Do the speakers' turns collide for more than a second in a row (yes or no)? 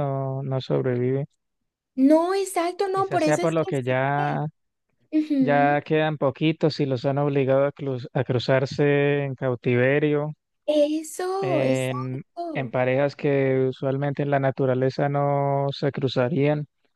yes